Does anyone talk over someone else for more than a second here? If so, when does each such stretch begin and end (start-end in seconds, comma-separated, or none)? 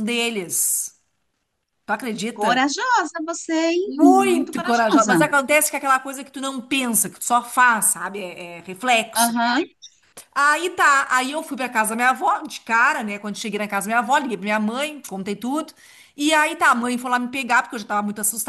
3.9-5.2